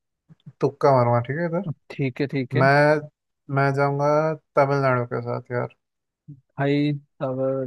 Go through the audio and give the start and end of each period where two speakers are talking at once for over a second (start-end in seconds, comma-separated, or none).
none